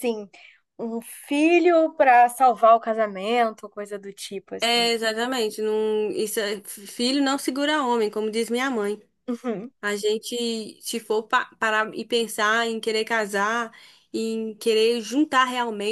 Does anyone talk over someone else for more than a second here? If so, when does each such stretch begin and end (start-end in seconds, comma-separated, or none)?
none